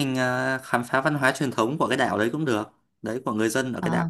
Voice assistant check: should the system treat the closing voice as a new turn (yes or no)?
yes